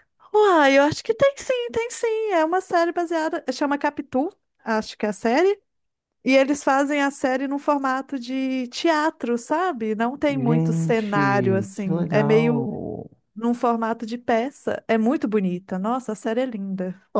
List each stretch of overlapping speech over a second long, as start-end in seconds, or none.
10.3-12.7